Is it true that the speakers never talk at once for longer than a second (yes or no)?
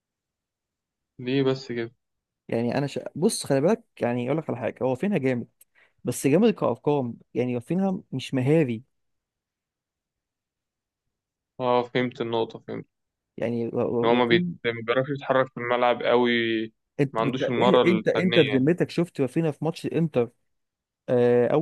no